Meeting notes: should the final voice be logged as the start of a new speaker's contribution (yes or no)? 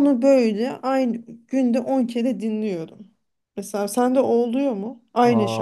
yes